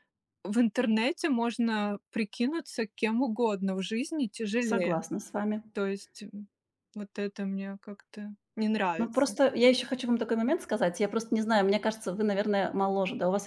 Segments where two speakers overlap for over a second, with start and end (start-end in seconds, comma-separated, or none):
none